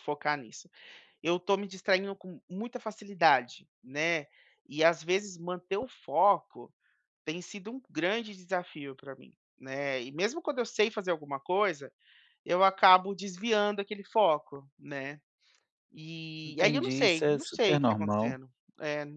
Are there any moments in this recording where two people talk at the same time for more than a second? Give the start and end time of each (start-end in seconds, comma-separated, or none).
16.5-18.4